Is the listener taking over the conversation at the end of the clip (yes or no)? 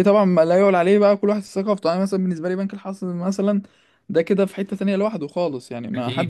yes